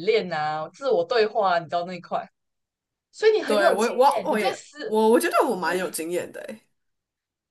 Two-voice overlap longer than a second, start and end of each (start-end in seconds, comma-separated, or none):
3.5-5.0